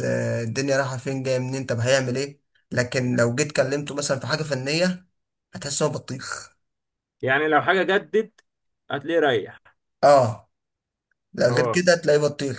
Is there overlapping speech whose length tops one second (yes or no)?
no